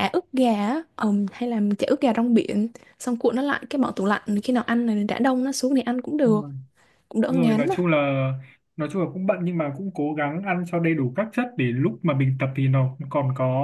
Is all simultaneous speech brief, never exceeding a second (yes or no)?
yes